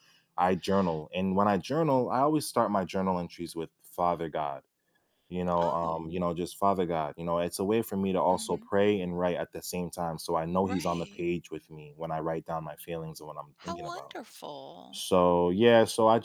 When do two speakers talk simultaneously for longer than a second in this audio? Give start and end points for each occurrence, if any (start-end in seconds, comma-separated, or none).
none